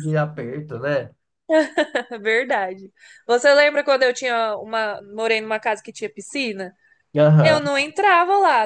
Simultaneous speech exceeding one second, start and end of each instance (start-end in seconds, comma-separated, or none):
none